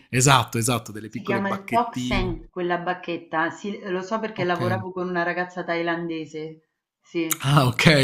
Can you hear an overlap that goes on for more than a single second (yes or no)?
yes